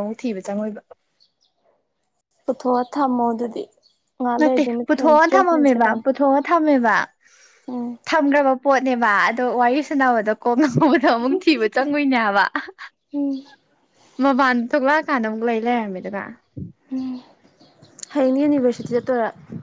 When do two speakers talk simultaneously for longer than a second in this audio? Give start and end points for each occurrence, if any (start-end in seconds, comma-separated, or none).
4.4-6.0